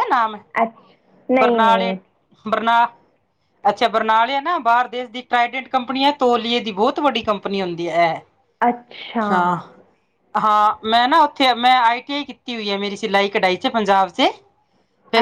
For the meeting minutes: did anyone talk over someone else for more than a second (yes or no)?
no